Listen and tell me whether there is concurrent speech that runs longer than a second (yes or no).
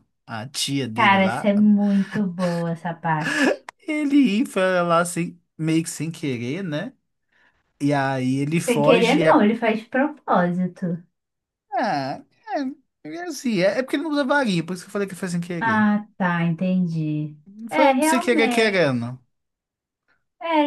yes